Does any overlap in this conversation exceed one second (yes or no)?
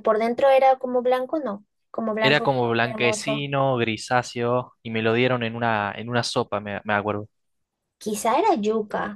yes